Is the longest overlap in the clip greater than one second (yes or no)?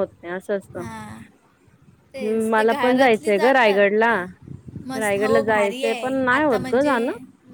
yes